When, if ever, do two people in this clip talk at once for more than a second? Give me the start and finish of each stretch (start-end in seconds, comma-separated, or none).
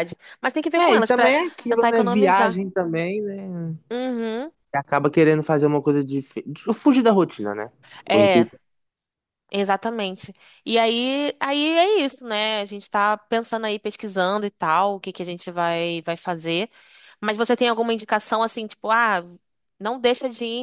0.8-2.6